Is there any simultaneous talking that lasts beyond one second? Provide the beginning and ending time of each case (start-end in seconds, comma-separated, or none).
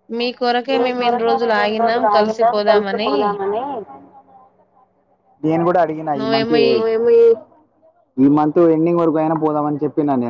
0.8-3.1